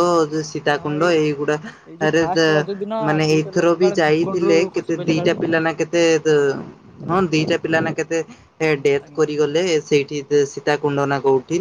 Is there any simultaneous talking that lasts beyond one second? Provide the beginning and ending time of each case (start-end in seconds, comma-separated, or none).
3.3-5.3